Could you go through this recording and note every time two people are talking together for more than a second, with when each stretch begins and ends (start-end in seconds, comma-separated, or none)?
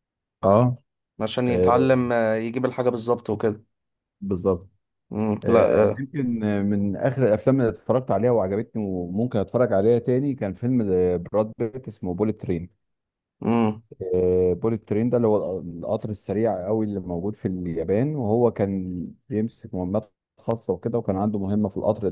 none